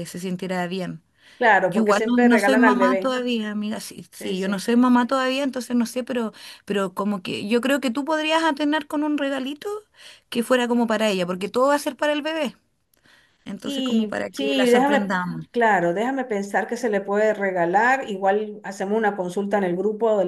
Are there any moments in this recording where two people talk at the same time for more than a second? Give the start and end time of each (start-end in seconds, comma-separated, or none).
1.7-3.1, 13.6-15.1